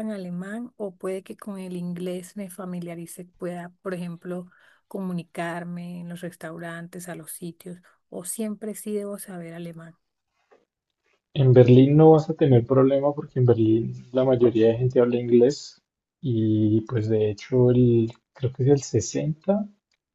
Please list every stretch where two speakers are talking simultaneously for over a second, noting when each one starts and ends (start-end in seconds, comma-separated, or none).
none